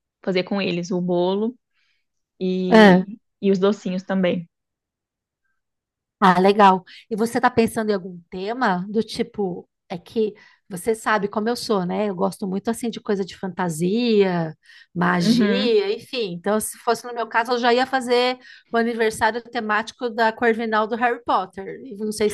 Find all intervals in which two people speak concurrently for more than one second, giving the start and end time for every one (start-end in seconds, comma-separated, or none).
none